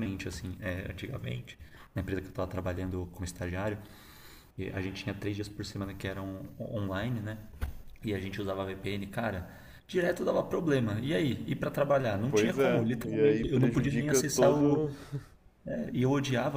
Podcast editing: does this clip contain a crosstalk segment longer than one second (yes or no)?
yes